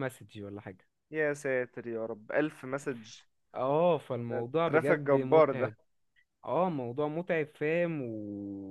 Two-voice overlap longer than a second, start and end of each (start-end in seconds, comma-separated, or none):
4.3-5.7